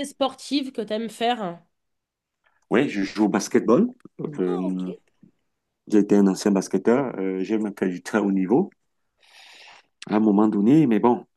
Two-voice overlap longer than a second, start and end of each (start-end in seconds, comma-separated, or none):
none